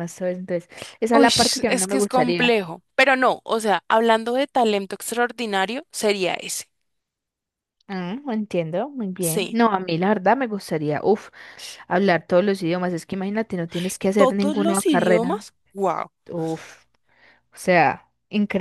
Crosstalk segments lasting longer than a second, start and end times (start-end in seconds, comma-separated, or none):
1.1-2.6, 14.2-15.5